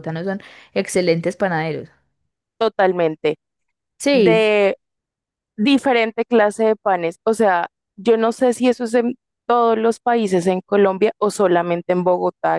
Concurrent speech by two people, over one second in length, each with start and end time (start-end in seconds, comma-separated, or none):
none